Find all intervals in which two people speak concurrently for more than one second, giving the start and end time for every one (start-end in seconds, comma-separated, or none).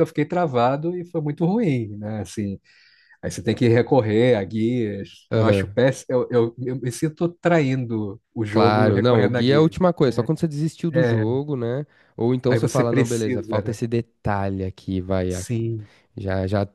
8.5-10.3, 12.5-13.8